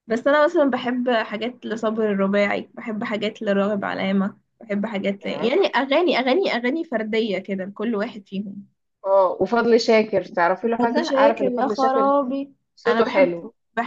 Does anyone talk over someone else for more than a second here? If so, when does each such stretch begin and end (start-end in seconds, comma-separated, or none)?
10.8-12.1